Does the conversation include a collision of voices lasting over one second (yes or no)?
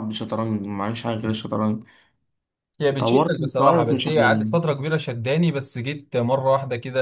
yes